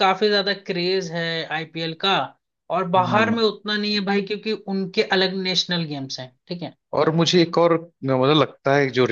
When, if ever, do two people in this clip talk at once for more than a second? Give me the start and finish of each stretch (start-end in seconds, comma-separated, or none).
none